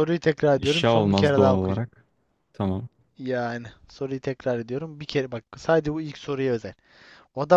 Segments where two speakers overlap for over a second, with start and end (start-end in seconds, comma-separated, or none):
0.6-1.9